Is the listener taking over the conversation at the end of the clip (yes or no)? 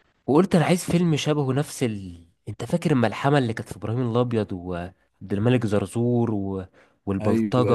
yes